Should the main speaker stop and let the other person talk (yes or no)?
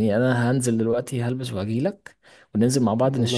no